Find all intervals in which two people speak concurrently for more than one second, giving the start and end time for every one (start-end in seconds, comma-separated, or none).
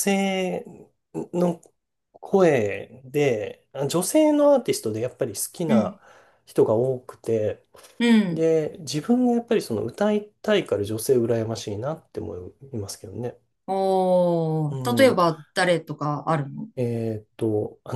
none